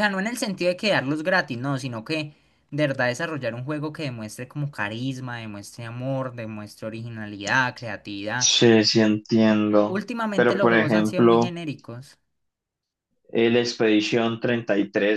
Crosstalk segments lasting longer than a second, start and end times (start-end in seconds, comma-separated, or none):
9.9-11.6